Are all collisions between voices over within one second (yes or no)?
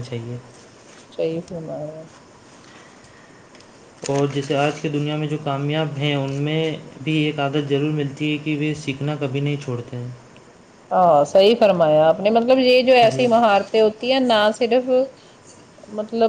yes